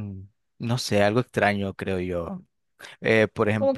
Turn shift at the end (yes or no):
no